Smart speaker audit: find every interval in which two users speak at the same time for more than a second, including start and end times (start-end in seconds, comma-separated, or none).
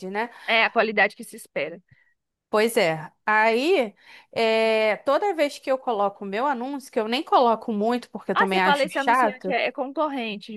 8.3-9.6